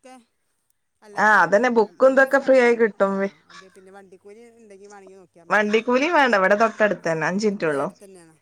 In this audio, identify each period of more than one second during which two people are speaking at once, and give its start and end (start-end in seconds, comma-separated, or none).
1.2-2.9, 5.5-7.9